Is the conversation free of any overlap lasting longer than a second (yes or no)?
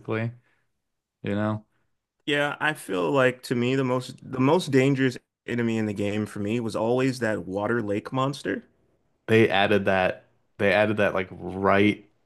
yes